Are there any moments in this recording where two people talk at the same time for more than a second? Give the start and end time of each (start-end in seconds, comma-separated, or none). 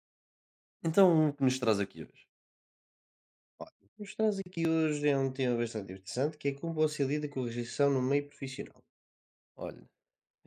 none